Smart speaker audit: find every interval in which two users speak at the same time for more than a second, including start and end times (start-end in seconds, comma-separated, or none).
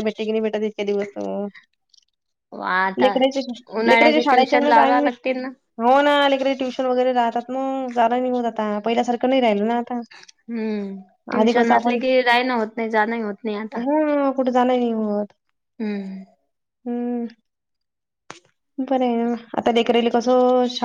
3.9-5.1